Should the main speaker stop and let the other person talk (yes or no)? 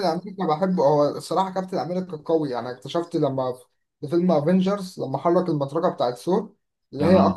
no